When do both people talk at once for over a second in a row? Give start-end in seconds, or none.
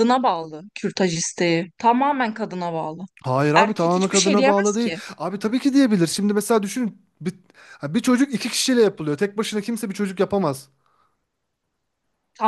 3.5-5.0